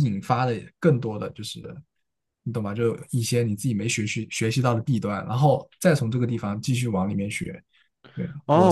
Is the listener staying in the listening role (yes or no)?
no